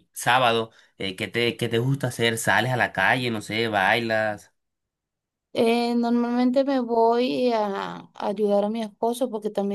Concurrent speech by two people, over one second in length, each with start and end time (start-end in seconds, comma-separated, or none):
none